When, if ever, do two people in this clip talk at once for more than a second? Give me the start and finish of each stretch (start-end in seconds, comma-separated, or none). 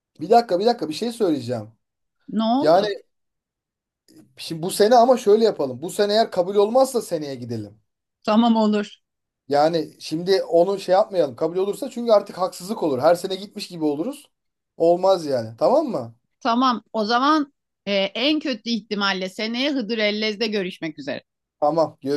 none